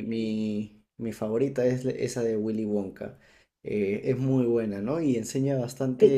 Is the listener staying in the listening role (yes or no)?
yes